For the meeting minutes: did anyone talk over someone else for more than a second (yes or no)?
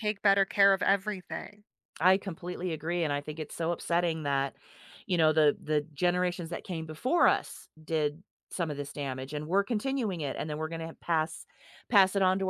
no